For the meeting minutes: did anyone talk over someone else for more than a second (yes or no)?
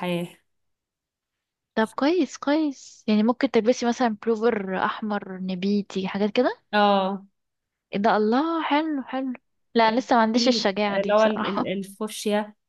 yes